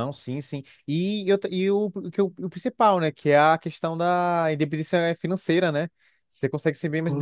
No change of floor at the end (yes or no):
yes